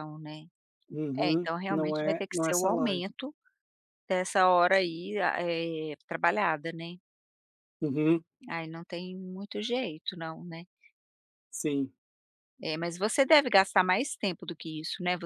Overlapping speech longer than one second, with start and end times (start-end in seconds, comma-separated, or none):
1.2-3.0